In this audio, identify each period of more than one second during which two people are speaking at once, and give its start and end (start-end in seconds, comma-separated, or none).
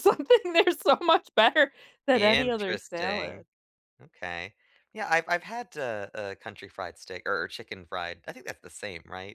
2.1-3.4